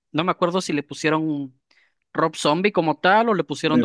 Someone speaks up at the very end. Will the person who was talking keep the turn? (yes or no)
no